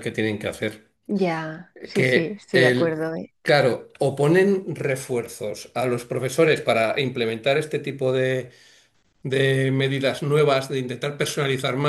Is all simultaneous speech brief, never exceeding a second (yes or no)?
no